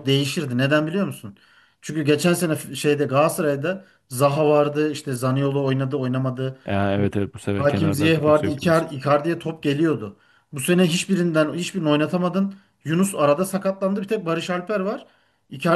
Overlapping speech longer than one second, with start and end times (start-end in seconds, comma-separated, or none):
7.6-8.8